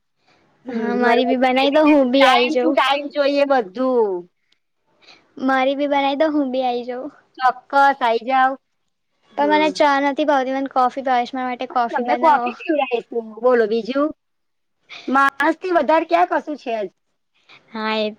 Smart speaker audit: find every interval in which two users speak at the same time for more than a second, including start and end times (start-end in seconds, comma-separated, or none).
0.8-2.8